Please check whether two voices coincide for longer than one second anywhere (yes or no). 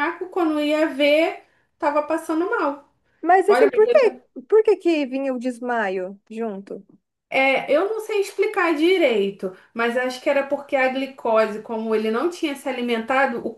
no